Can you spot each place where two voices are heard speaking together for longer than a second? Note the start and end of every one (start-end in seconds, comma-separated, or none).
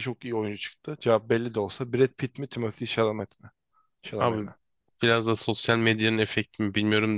none